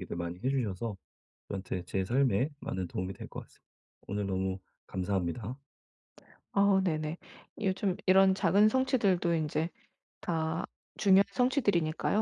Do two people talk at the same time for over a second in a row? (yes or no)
no